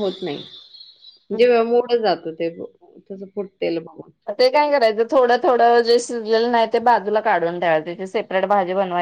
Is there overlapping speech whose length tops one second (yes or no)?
no